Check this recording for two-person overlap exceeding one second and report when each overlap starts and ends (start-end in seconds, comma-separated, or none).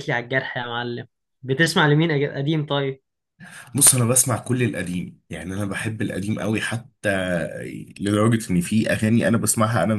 none